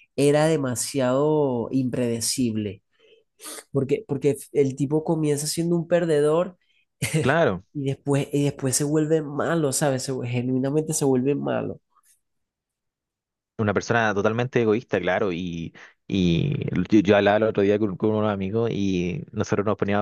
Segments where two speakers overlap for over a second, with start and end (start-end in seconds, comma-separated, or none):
none